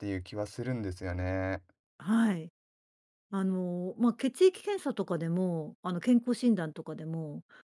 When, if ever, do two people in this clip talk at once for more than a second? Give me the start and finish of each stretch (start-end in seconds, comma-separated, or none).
none